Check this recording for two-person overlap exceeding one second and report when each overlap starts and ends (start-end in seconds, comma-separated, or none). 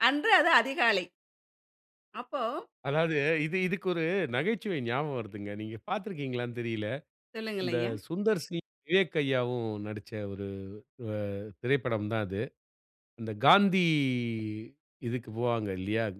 none